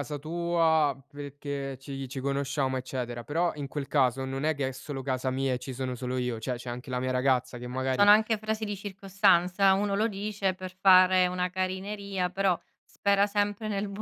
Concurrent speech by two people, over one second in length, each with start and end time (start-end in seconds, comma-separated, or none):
none